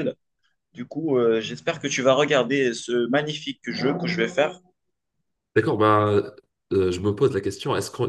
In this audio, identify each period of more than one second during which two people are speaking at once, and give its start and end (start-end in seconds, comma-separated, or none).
none